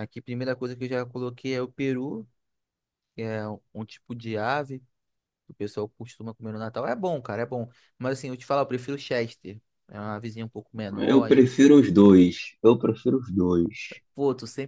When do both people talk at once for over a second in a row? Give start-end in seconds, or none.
none